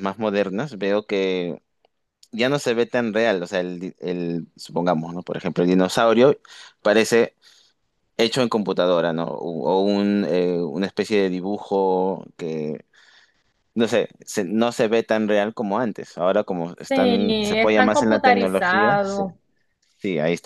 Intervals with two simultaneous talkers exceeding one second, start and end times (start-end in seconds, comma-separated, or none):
16.9-19.2